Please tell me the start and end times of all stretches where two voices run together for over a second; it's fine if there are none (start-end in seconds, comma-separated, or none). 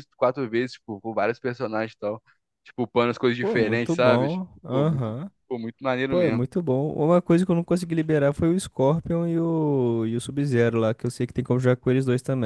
3.4-5.1